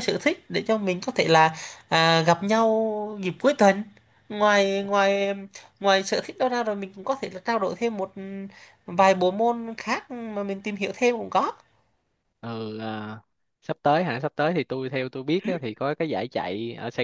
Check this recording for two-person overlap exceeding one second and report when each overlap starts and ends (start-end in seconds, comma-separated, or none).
none